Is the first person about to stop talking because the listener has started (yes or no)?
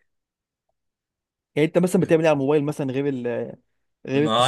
yes